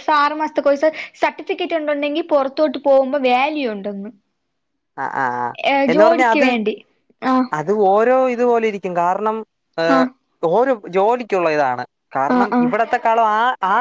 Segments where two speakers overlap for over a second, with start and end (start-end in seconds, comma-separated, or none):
none